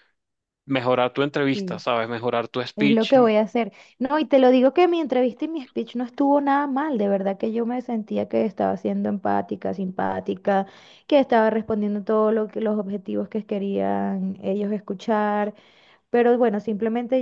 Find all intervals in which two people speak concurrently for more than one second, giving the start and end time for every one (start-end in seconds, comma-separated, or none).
none